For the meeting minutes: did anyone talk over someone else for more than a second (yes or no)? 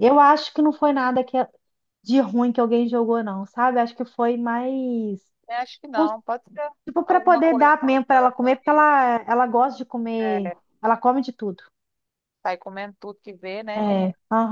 yes